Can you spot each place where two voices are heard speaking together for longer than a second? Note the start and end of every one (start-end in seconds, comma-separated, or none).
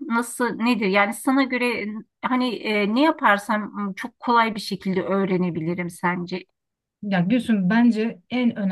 none